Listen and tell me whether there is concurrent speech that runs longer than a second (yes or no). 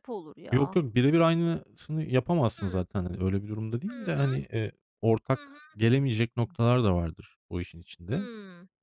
no